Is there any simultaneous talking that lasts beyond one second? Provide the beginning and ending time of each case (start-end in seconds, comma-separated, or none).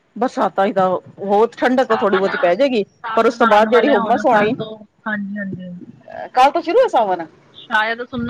3.0-4.5